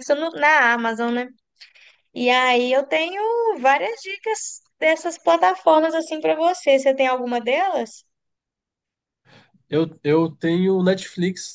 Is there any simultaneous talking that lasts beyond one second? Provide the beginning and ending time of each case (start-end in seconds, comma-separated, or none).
none